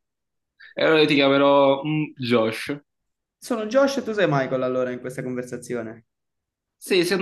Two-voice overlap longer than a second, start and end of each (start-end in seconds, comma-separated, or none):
none